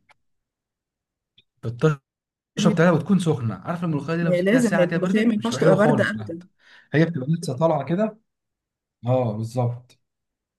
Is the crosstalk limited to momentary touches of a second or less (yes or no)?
no